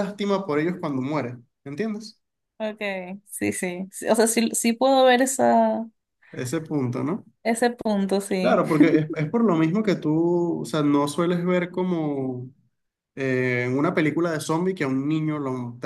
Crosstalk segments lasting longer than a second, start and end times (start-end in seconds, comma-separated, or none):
none